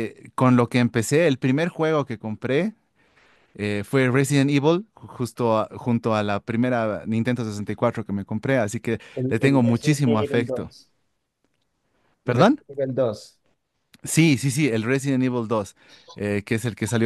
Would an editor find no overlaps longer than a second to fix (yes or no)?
no